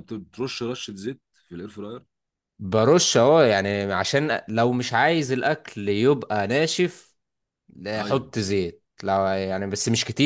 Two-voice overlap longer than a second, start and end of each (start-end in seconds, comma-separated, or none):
none